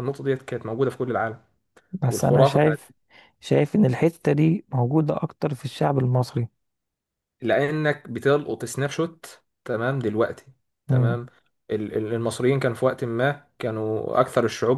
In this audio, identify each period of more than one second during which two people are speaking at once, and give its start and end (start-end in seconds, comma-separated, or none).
none